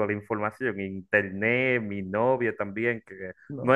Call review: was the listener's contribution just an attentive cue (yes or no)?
yes